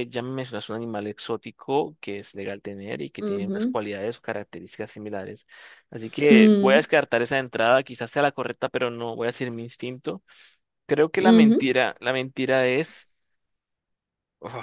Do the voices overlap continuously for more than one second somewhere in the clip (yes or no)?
no